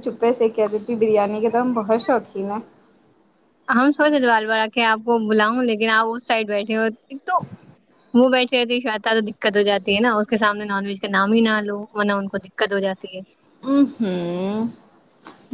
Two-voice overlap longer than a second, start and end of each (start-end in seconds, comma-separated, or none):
none